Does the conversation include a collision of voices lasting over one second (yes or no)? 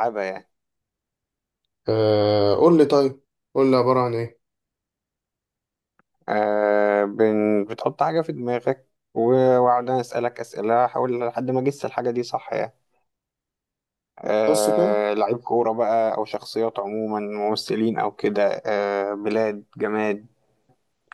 no